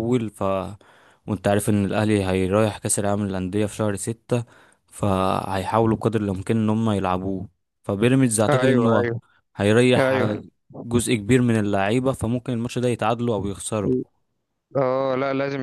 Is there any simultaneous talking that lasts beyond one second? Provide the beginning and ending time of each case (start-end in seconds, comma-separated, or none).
none